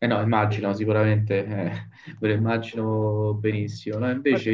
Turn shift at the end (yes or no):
no